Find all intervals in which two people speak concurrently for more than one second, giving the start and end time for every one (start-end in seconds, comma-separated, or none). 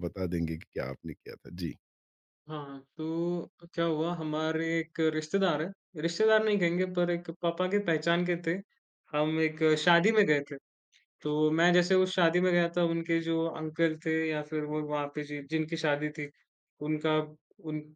none